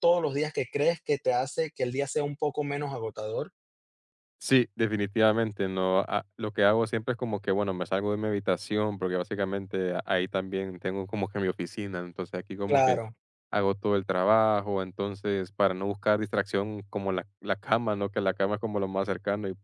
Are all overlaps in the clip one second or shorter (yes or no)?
yes